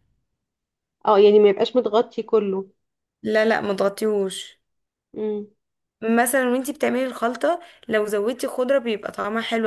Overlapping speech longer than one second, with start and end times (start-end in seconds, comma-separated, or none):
none